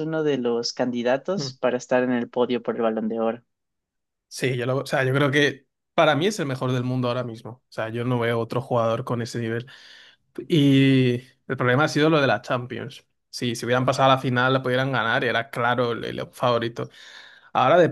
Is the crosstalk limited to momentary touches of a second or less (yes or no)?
yes